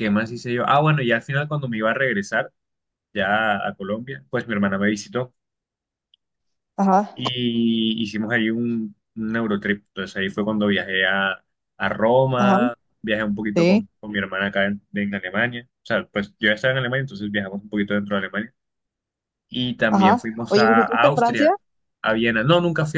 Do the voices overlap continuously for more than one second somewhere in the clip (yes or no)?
yes